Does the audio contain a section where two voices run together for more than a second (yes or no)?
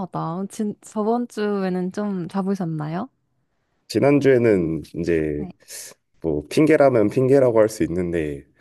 no